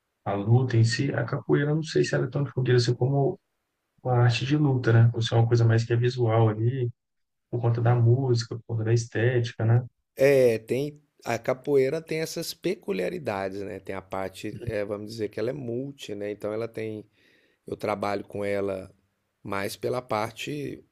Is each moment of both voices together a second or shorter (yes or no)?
yes